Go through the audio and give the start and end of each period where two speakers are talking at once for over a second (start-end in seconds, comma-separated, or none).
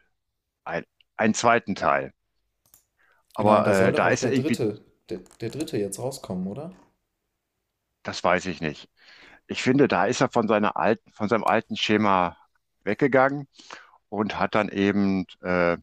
3.4-4.6